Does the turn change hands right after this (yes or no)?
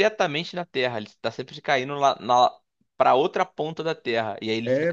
yes